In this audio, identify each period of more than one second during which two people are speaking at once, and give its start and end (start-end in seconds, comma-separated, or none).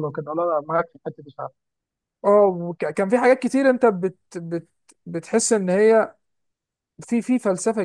none